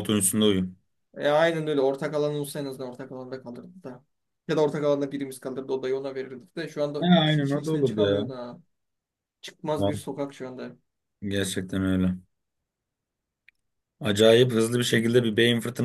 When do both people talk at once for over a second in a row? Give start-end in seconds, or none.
7.0-8.3